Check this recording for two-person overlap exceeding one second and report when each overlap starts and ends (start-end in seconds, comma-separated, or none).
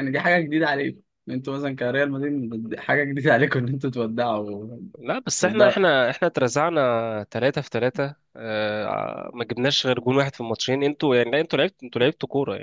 none